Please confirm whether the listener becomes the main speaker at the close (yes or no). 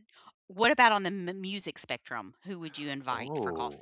yes